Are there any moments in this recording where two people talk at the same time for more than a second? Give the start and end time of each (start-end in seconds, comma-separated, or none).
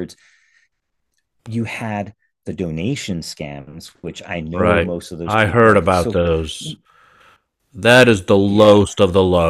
4.5-6.2